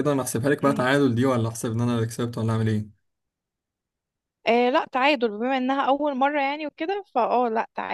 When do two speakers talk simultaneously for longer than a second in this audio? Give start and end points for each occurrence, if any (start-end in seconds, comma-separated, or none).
none